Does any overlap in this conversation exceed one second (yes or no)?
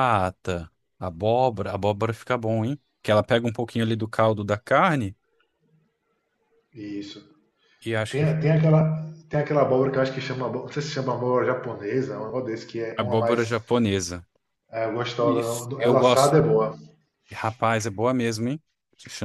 yes